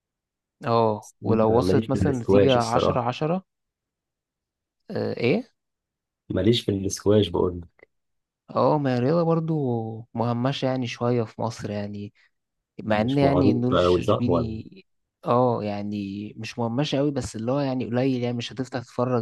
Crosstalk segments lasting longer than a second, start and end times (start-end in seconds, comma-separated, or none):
1.5-3.1, 12.9-14.6